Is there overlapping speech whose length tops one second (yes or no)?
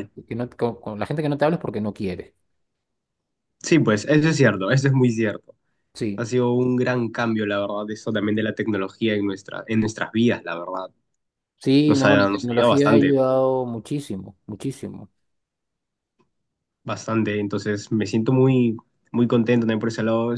yes